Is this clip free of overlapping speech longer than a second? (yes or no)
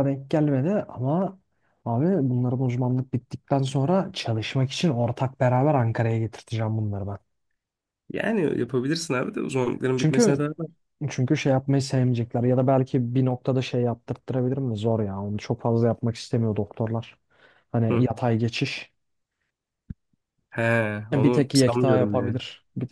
no